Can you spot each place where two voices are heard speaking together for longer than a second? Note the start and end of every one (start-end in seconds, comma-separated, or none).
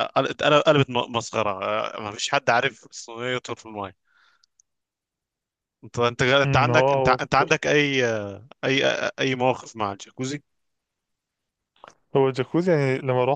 6.4-7.7